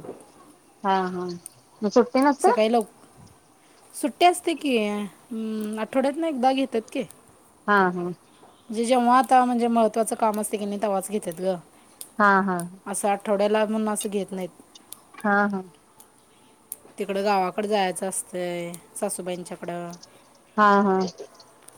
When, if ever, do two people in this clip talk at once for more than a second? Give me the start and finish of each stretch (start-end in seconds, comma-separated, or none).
none